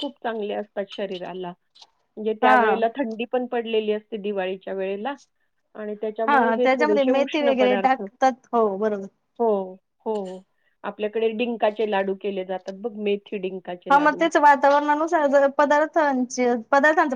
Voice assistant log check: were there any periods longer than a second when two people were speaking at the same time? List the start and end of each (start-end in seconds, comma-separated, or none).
6.3-9.0